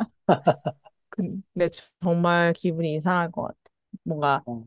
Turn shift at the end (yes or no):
no